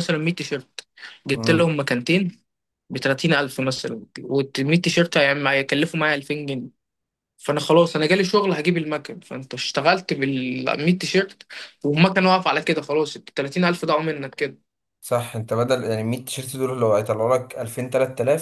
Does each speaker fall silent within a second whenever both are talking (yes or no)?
yes